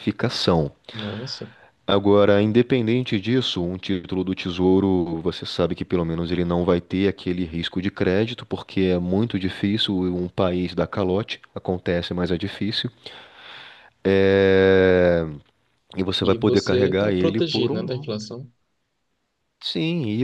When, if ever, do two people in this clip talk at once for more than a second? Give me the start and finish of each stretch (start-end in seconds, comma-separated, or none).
16.2-18.1